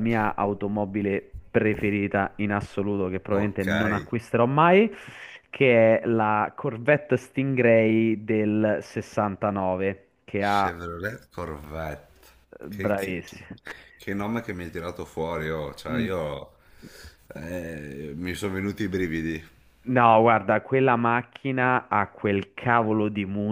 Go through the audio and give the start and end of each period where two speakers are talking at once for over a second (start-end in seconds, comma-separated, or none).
none